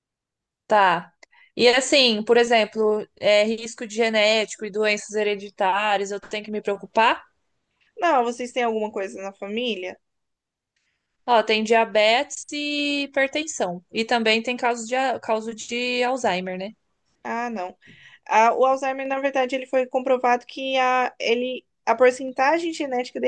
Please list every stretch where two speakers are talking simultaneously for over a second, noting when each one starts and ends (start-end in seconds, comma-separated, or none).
none